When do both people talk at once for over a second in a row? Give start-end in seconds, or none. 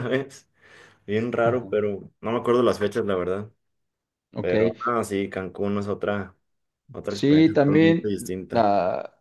7.1-8.7